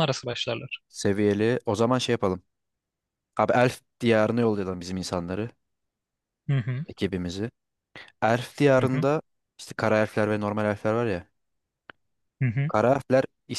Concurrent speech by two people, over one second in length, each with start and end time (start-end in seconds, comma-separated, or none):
none